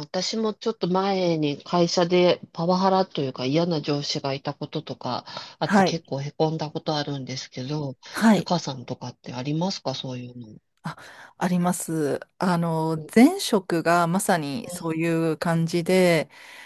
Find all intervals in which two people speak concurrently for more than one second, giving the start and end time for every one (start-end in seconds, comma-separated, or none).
none